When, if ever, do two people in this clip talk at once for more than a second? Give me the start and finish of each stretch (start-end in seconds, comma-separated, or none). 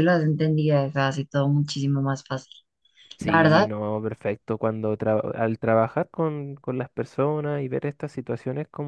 none